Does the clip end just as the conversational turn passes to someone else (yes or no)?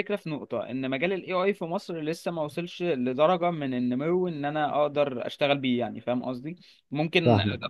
no